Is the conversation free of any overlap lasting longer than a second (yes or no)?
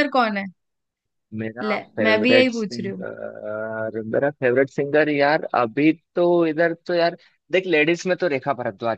no